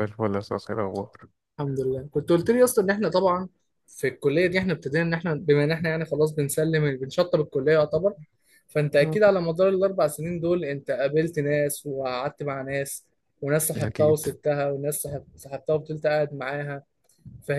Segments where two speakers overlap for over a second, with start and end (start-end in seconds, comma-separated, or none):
none